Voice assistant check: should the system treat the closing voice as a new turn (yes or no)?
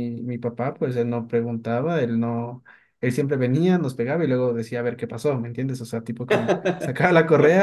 no